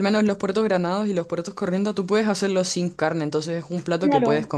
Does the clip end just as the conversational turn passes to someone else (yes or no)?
no